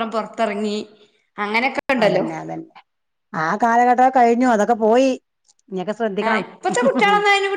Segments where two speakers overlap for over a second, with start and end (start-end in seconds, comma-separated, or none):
none